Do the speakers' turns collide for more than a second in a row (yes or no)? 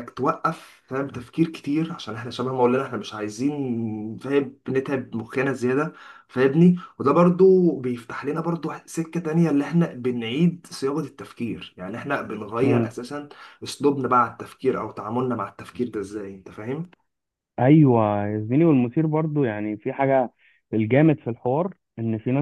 no